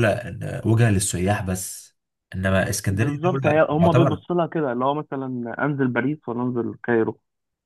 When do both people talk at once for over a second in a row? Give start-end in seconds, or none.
2.9-4.2